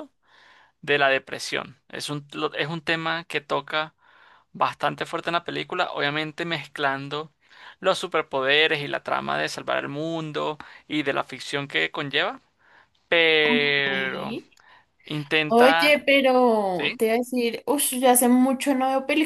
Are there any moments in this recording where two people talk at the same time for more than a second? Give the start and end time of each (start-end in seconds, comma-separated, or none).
none